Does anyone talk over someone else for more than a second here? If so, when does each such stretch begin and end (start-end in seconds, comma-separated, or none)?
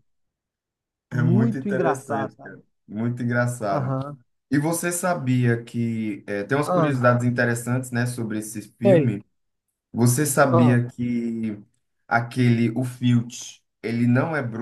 1.1-2.6